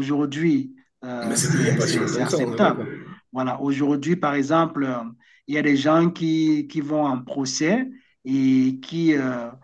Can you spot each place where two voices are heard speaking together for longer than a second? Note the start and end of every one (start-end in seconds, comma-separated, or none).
1.2-2.9